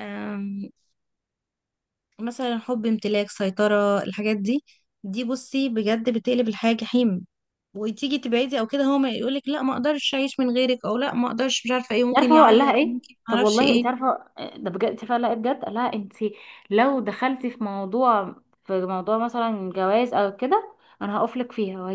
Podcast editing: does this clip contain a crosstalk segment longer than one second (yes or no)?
yes